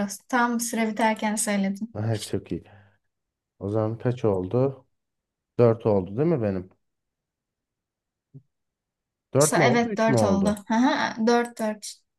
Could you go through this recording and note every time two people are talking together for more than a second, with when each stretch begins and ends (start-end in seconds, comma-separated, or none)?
9.4-10.6